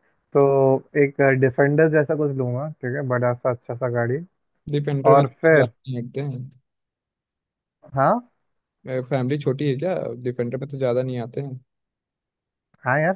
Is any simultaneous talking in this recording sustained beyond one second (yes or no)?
no